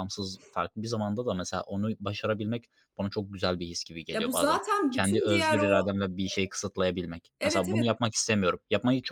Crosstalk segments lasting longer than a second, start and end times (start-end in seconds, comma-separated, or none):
4.1-5.9